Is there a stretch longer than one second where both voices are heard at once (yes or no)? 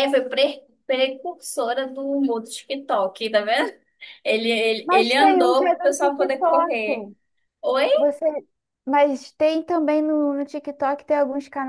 yes